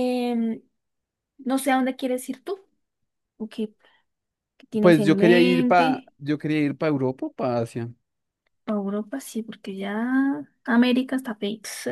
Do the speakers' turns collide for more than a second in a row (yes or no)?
yes